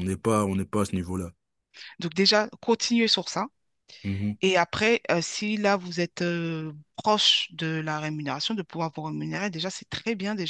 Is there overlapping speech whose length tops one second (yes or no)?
no